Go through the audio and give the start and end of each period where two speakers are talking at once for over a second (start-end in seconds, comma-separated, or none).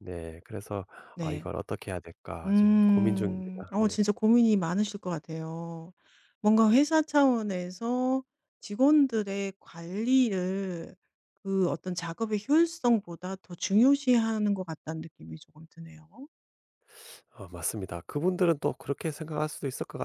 2.5-4.0